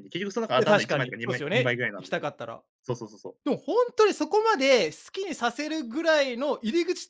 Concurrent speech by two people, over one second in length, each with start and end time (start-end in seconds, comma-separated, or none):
0.6-2.3